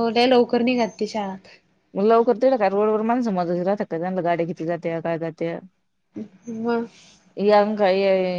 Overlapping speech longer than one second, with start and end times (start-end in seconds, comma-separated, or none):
none